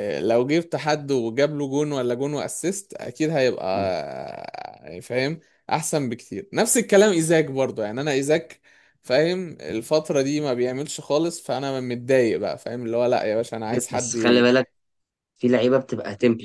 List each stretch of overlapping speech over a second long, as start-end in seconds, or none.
none